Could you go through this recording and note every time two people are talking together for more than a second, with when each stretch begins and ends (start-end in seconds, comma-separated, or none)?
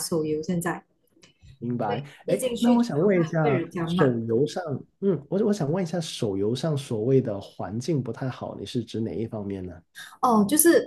1.8-4.2